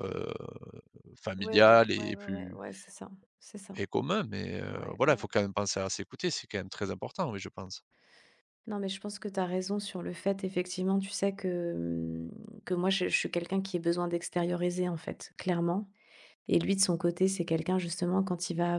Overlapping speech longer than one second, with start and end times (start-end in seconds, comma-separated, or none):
1.4-2.6